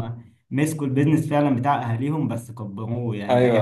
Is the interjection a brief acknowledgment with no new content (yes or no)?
no